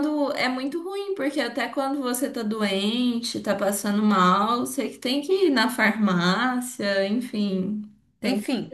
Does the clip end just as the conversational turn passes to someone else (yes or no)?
yes